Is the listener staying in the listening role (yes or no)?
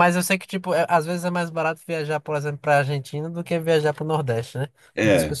no